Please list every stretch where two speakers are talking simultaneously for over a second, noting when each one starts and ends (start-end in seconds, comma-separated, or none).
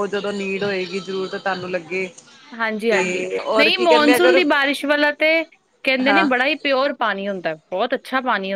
2.9-4.4